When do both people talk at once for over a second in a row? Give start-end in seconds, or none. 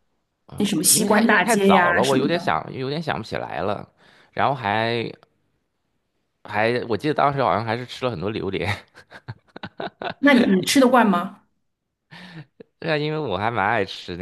0.6-2.5